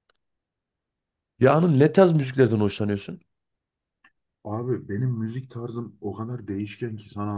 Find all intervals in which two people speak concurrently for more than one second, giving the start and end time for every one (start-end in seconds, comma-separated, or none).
none